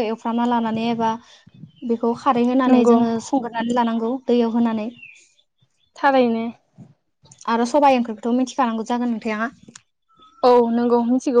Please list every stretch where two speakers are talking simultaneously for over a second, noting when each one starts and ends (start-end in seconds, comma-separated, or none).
none